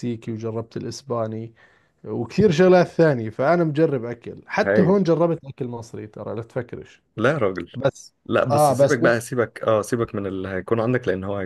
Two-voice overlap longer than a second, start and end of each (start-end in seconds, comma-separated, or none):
none